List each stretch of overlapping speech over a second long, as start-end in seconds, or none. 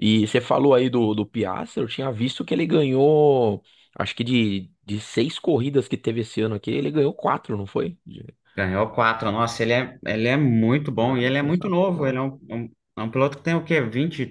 11.0-12.2